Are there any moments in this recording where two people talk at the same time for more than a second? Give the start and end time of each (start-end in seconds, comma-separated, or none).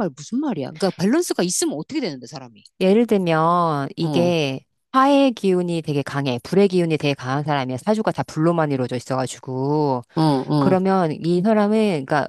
none